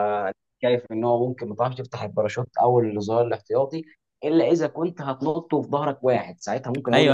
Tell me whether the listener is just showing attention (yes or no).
no